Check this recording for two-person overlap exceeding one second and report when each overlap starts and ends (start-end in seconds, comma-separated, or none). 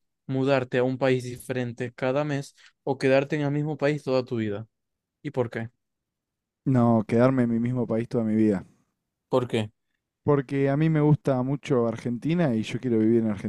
none